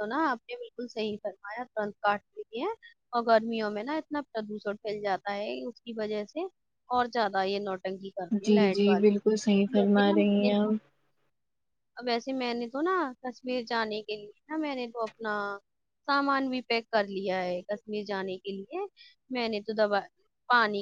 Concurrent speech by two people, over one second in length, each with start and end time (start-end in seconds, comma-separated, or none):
8.5-10.5